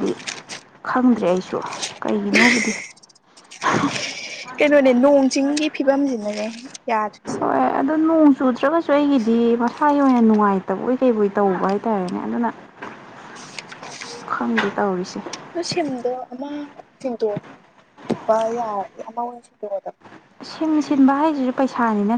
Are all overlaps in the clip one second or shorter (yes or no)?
yes